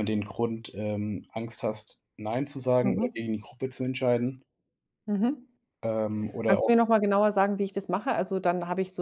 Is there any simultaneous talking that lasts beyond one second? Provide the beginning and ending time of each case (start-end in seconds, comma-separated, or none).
none